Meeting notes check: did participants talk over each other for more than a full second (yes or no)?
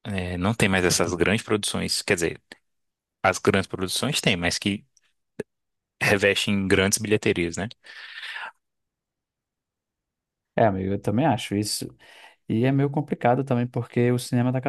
no